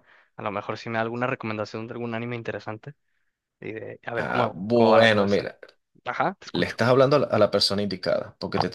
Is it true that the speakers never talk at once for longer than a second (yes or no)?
no